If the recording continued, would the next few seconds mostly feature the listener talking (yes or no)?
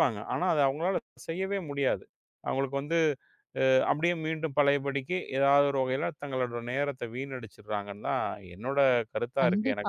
yes